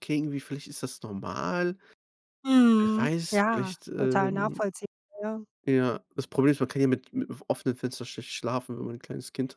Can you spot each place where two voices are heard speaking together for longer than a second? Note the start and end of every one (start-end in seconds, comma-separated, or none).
2.8-4.6